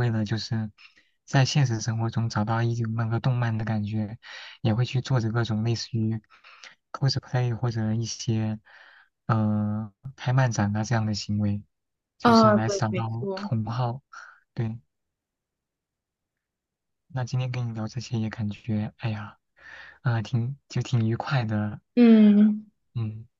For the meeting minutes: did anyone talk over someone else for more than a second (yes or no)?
yes